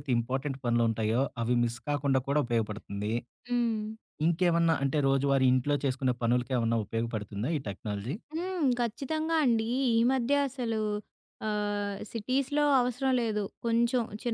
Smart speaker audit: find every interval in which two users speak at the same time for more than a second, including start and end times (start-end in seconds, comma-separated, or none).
none